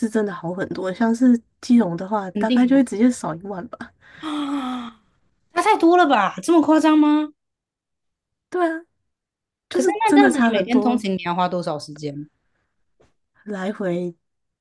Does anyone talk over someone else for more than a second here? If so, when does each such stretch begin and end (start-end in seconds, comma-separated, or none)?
9.7-11.1